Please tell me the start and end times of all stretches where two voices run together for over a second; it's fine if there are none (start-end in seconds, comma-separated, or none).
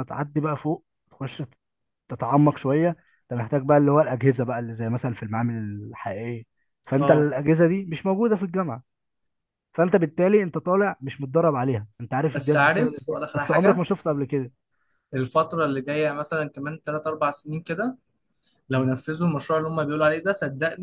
12.3-13.8